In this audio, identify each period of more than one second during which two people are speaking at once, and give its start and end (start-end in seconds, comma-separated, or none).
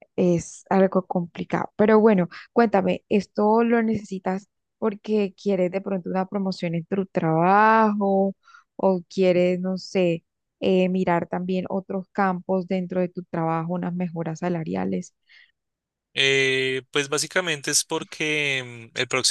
none